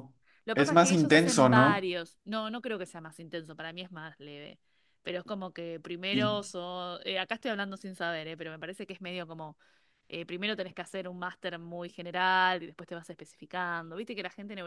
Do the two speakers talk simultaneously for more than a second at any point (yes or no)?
yes